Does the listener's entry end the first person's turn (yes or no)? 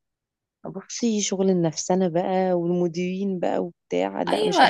yes